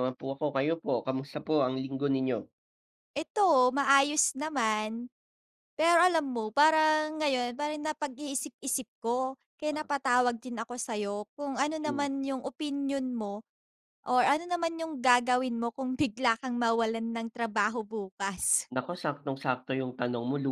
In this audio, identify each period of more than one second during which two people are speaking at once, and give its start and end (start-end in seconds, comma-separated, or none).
none